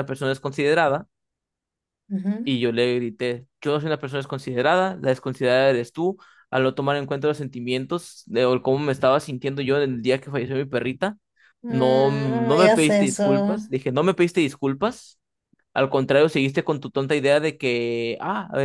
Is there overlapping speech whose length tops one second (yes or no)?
yes